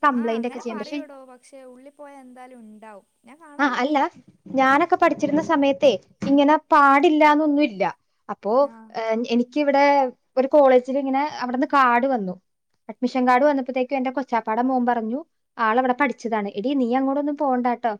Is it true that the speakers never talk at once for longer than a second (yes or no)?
yes